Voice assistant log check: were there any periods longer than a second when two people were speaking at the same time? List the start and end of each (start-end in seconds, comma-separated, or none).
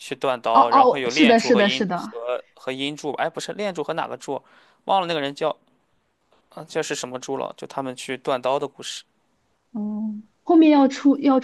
0.5-2.1